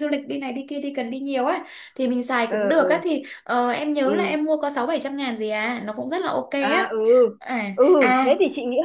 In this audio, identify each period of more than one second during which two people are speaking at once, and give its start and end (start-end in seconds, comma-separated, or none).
none